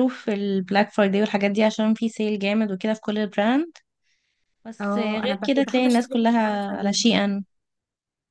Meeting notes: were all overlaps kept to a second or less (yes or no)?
no